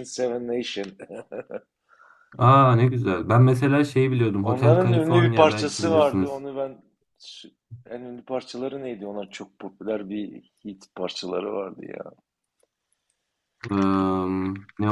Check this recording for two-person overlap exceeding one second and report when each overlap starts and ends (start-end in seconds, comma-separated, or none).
4.4-6.4